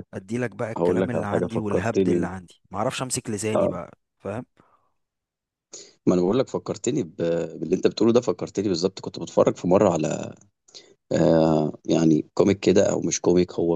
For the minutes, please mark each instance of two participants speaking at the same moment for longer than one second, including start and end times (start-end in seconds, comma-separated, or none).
0.8-2.3